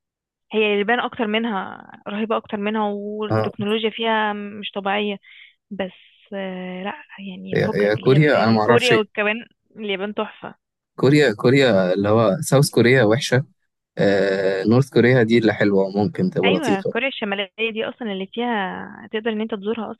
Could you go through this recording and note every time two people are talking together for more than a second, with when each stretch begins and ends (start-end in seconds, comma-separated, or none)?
7.5-9.1